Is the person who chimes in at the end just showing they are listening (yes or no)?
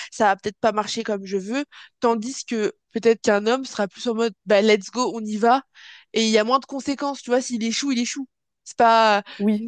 yes